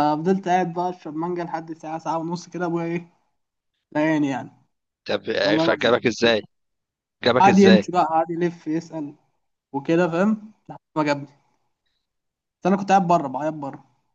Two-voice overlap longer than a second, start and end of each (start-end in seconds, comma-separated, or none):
none